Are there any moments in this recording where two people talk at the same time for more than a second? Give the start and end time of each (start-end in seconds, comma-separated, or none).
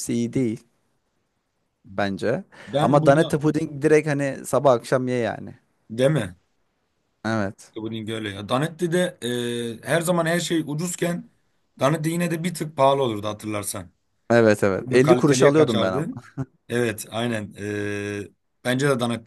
14.8-16.1